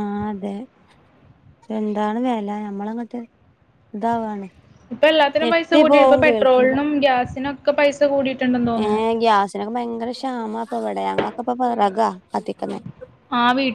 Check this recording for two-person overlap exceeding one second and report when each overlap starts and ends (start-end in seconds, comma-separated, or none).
5.4-6.8